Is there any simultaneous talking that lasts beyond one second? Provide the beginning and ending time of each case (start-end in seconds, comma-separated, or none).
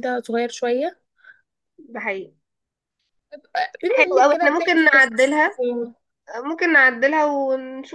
3.9-5.4